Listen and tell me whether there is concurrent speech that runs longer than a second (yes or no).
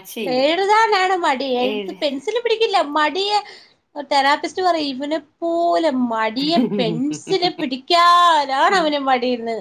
yes